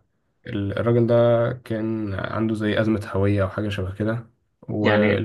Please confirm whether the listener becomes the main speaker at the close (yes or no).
no